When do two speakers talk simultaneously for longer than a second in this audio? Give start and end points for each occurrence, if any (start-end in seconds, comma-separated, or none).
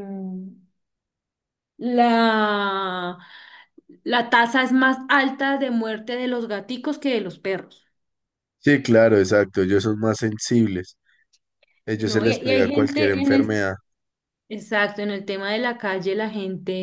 11.9-13.6